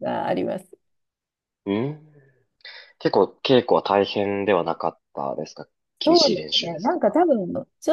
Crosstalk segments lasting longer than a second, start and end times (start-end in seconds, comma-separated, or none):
6.0-7.3